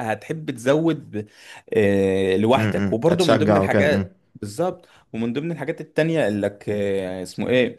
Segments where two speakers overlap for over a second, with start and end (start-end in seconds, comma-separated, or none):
2.6-4.1